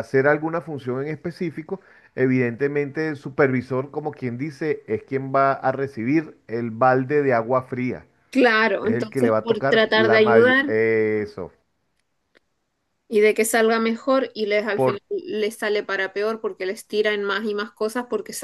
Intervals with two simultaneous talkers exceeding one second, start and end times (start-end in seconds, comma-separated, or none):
8.8-10.7